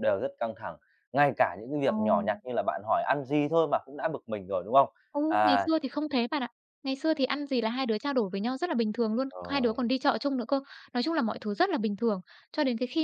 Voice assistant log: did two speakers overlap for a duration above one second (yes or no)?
no